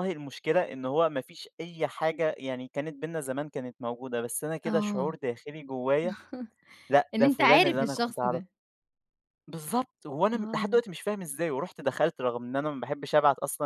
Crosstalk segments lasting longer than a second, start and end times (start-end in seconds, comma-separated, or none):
7.1-8.5